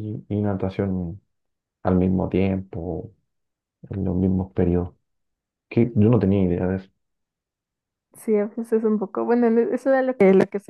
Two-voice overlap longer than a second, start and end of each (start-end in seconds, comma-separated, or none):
none